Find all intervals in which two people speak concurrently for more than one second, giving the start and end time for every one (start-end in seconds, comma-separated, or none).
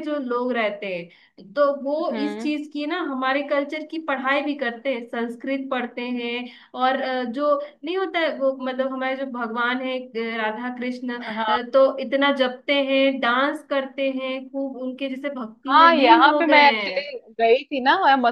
15.7-17.0